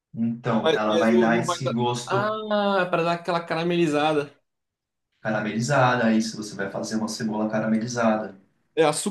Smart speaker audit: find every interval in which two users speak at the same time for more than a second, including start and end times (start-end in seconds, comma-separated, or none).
0.6-2.3